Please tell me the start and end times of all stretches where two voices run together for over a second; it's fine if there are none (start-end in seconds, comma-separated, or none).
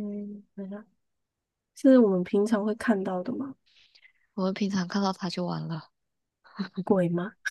none